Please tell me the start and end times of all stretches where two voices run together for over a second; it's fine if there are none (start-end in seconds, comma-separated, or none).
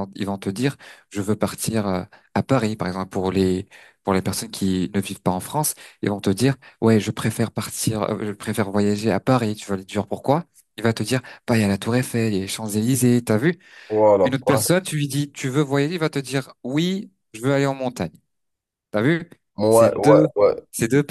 none